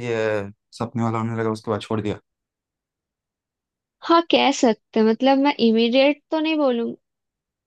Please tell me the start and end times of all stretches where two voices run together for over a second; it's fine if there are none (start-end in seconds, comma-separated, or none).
none